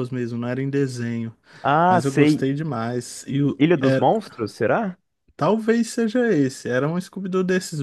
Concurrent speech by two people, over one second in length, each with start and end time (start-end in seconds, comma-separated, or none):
none